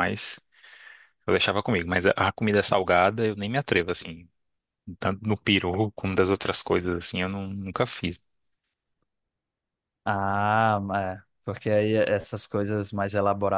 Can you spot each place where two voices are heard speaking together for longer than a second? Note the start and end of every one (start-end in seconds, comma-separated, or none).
none